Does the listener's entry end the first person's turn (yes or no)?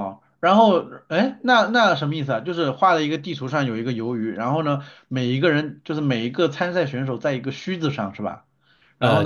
yes